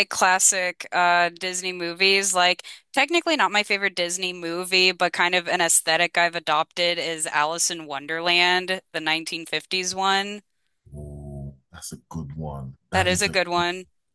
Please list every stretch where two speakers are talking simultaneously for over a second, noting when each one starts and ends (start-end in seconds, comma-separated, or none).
none